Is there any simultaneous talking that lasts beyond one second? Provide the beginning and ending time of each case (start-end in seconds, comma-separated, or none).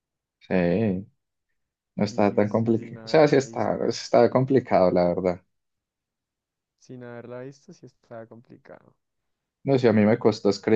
2.1-3.8